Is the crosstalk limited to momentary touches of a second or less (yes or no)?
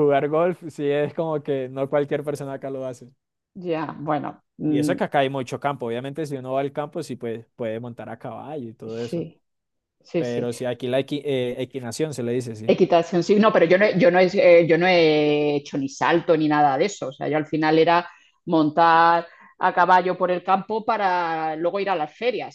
yes